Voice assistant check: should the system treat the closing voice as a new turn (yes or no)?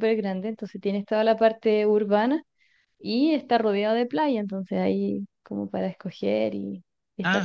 yes